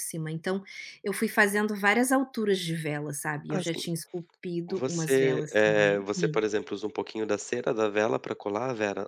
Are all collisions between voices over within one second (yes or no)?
no